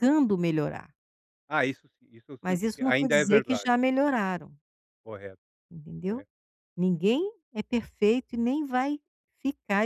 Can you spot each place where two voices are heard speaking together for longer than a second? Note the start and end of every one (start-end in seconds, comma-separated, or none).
2.4-3.6